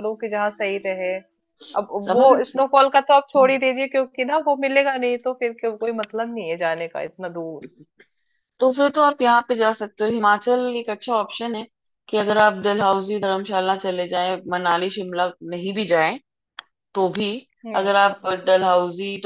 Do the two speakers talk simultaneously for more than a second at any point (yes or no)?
no